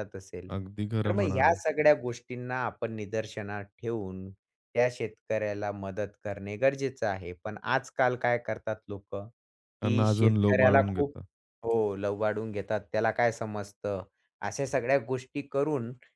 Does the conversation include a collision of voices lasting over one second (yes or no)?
yes